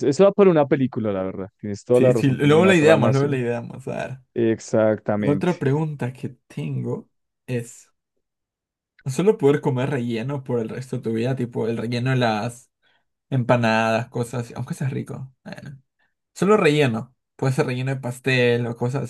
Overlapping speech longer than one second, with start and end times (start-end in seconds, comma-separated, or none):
1.9-3.3